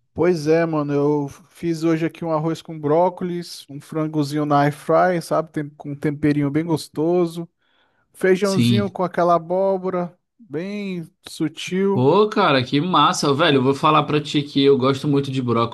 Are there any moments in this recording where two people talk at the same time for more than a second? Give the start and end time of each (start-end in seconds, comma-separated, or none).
none